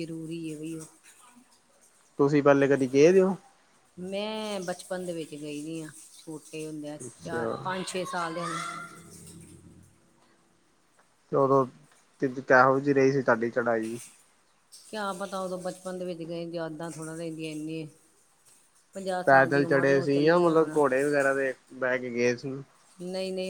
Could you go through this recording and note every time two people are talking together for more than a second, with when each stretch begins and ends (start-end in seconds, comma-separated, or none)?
19.2-20.8